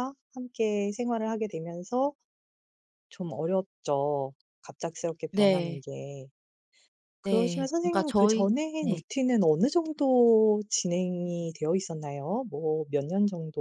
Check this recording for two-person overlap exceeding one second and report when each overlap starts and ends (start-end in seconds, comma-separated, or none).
7.2-9.0